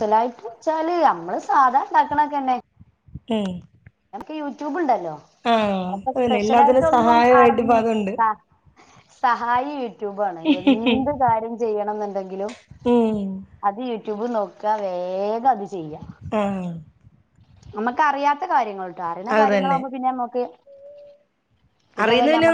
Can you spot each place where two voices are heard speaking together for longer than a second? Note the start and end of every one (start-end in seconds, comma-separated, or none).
6.2-8.1